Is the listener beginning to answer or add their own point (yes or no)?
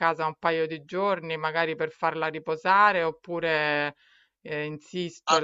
yes